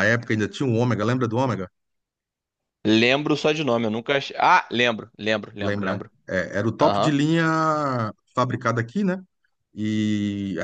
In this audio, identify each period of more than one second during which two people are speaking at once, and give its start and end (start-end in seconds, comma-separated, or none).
none